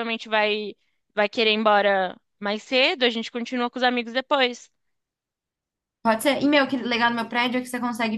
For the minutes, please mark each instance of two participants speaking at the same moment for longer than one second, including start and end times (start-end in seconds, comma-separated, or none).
none